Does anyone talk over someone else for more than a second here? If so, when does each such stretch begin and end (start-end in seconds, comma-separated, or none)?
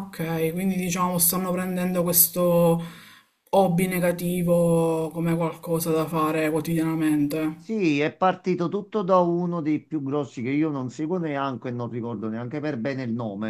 none